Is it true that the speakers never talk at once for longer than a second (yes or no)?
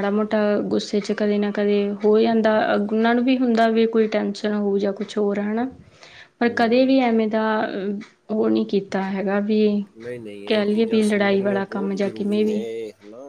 no